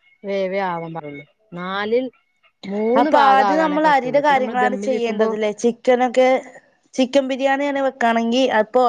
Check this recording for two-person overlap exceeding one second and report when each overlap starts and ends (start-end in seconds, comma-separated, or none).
3.0-5.3